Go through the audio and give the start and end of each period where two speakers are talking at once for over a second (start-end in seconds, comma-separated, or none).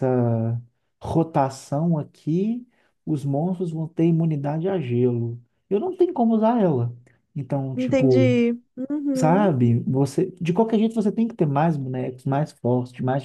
none